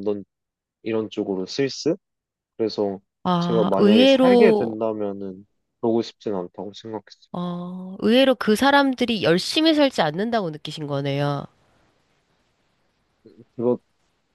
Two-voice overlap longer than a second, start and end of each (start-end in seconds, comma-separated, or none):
3.4-4.8